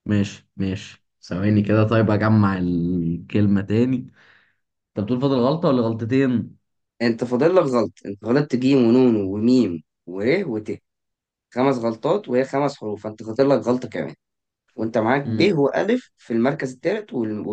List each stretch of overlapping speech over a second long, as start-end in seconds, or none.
none